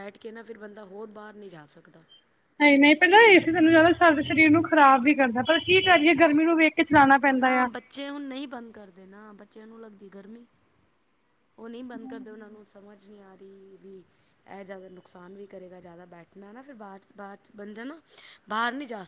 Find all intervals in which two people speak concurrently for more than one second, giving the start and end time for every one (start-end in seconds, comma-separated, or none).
none